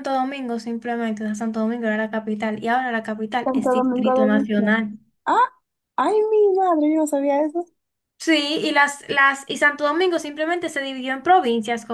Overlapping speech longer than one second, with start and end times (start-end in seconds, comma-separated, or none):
3.4-4.7